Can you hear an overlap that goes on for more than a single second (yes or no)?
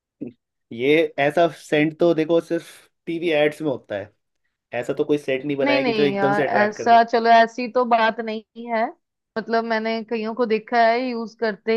yes